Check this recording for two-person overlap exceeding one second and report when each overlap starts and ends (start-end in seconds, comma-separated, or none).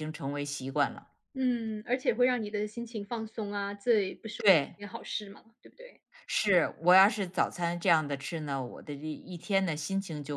none